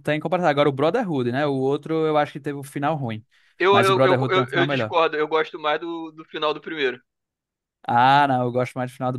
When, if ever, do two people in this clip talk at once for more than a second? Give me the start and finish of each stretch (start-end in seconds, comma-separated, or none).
3.7-4.9